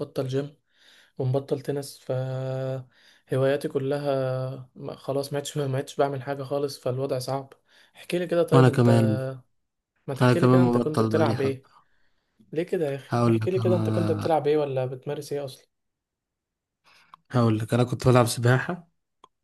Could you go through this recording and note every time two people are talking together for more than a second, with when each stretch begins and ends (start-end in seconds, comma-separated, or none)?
10.2-11.7, 13.1-14.4